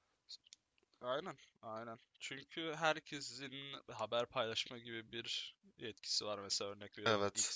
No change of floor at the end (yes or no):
yes